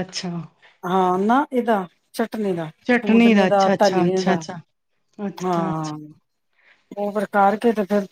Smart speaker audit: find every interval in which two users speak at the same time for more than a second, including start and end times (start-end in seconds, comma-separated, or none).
2.9-4.3